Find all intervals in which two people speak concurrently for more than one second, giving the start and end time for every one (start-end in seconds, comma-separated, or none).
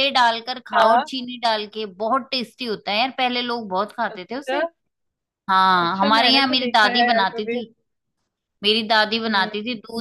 5.8-7.5